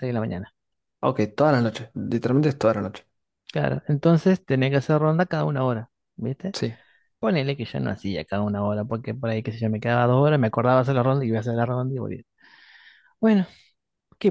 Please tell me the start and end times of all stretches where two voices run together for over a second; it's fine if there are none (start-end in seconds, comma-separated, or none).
none